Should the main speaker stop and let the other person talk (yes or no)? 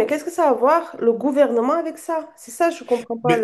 yes